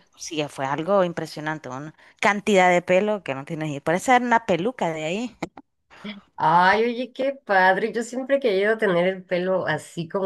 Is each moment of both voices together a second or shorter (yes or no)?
yes